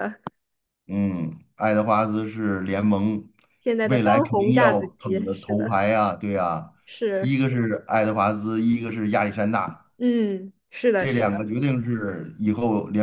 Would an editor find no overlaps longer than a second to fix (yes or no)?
no